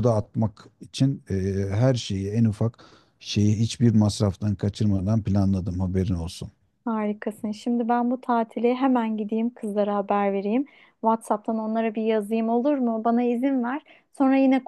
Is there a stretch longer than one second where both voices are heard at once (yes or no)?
no